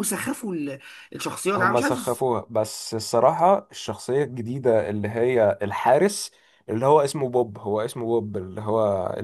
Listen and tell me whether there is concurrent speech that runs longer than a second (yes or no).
no